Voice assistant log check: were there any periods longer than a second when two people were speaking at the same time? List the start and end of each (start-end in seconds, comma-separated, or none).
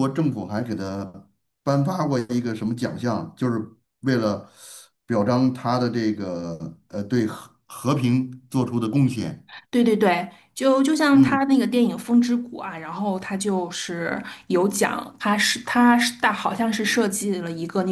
none